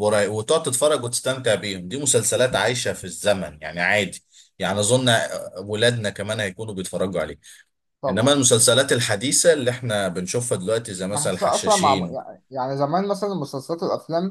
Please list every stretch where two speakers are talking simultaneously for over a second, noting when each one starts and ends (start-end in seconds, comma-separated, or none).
11.1-12.3